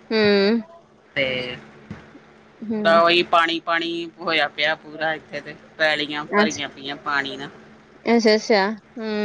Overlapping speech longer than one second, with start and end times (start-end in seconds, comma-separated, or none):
none